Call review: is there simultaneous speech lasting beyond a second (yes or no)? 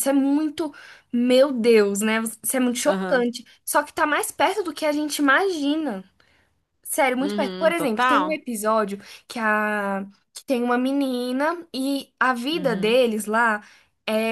yes